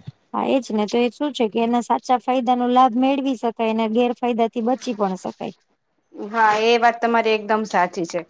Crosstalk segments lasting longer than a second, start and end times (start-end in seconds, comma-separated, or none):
none